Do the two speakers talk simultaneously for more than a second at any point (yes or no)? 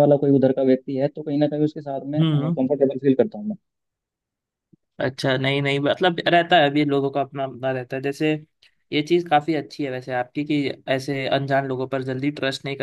no